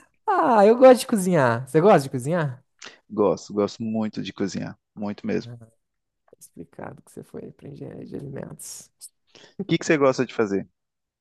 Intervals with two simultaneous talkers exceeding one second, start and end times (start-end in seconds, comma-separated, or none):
none